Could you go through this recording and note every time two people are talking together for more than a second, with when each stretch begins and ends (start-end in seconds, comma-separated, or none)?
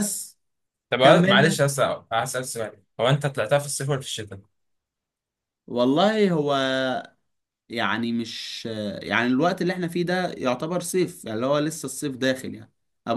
none